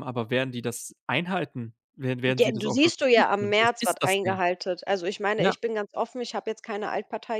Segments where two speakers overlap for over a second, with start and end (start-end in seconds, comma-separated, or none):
2.2-4.4